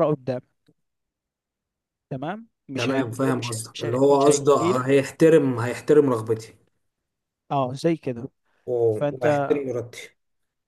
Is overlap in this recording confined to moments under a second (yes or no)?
no